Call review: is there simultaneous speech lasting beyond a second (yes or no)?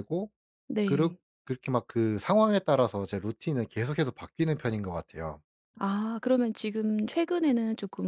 no